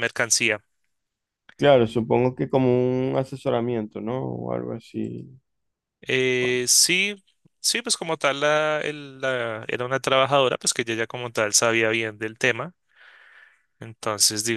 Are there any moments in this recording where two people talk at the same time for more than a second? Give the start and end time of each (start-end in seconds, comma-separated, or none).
none